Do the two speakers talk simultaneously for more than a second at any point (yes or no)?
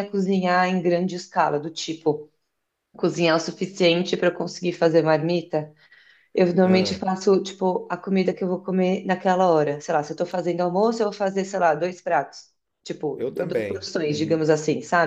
yes